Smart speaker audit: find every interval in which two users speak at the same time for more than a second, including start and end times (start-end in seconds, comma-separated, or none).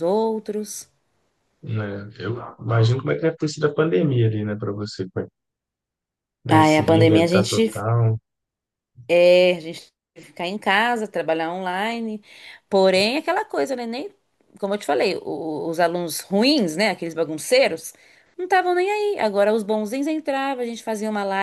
6.5-7.8